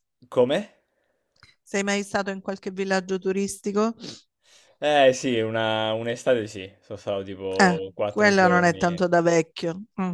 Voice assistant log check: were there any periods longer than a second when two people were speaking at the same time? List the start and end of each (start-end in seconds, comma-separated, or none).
7.6-9.0